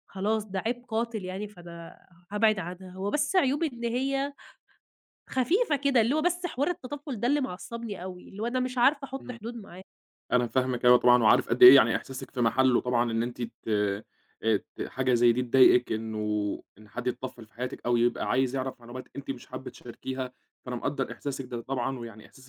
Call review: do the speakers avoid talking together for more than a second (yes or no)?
yes